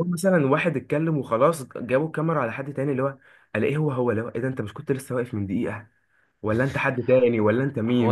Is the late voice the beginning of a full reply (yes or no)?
yes